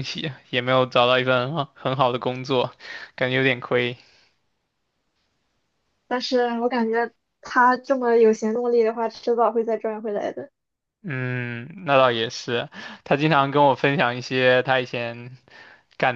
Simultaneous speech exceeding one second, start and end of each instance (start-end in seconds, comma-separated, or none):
none